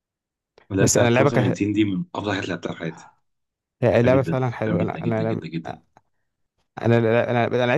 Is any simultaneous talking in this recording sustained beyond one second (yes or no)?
yes